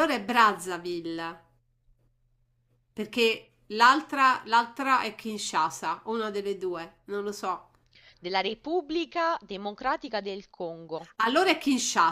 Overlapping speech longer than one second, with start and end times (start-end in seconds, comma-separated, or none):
none